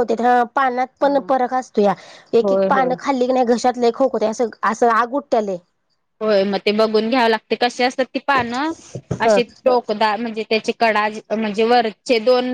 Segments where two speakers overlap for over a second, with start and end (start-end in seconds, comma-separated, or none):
none